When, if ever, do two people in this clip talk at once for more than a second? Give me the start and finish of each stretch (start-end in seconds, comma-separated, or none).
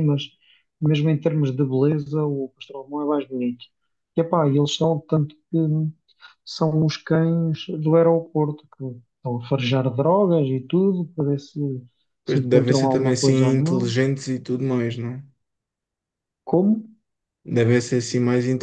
12.2-13.8